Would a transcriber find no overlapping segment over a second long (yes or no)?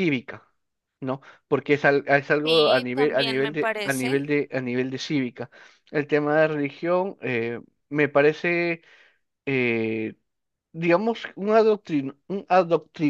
no